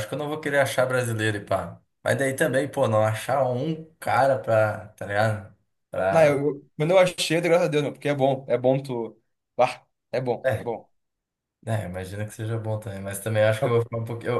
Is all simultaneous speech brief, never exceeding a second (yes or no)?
yes